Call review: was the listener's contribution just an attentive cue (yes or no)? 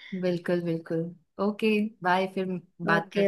no